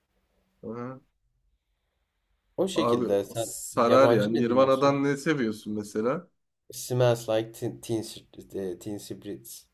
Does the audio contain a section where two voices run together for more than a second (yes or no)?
yes